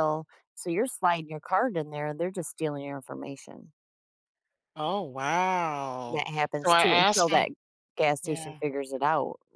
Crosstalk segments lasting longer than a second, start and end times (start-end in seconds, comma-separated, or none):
6.1-7.5